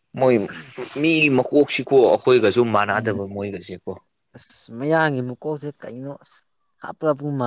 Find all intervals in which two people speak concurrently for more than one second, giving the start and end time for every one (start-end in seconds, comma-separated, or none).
none